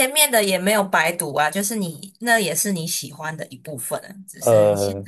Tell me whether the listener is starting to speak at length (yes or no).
no